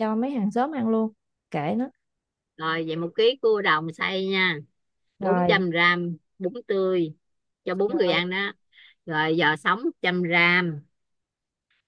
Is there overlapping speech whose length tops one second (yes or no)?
no